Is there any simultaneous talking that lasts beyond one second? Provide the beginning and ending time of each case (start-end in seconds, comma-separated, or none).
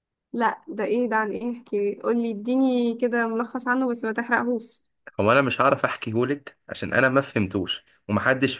none